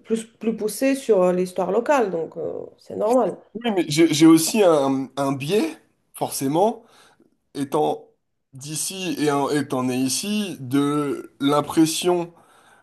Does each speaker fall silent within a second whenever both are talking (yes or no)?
yes